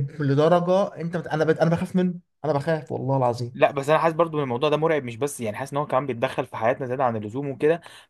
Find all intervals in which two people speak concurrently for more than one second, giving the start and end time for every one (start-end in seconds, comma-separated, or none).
none